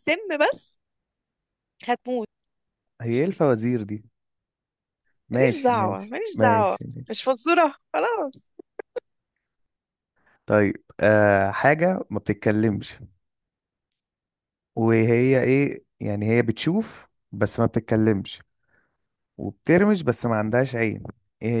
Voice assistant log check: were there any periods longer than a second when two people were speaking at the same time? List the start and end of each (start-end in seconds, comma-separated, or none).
5.3-6.8